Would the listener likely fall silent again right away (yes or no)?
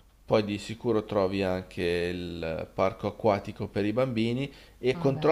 yes